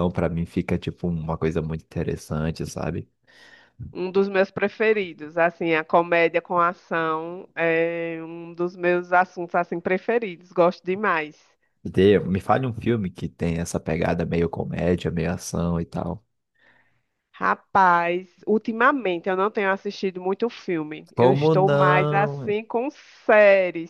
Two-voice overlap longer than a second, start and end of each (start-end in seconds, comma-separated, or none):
21.1-22.5